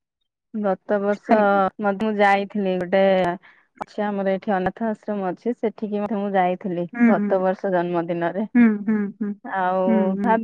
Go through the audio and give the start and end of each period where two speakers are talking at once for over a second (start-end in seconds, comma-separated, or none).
none